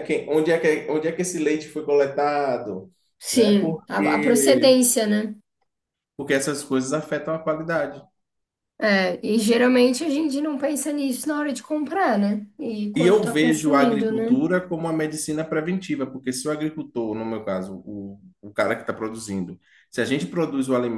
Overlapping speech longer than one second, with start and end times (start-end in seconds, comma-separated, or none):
3.3-4.8, 12.9-14.4